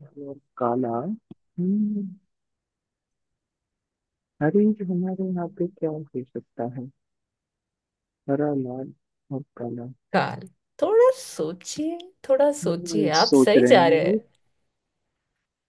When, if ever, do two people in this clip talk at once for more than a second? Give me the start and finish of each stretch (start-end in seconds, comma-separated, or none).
12.6-14.2